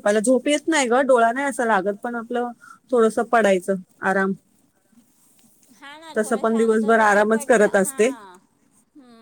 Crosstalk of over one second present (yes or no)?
yes